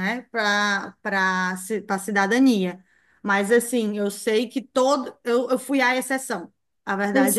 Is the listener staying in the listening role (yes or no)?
no